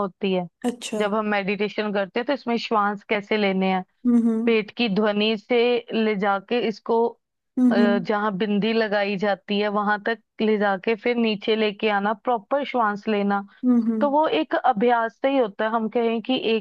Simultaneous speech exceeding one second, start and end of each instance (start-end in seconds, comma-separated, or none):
none